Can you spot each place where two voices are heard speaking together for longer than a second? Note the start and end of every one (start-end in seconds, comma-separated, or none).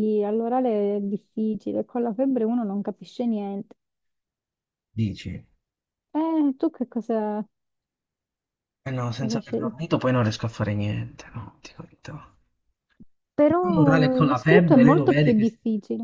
13.7-15.5